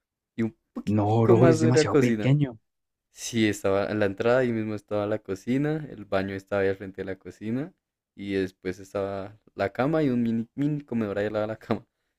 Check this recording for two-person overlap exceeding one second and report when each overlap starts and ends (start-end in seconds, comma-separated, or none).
0.8-2.3